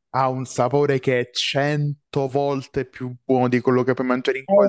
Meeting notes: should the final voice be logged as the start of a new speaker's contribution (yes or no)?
yes